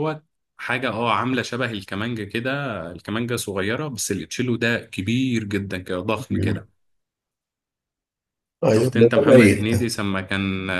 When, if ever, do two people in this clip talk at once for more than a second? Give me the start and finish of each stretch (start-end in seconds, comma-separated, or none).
8.7-9.9